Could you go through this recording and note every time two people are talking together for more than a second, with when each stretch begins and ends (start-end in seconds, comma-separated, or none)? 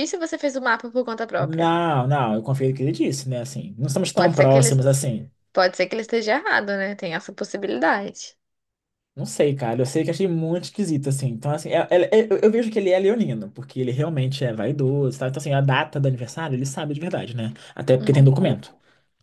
none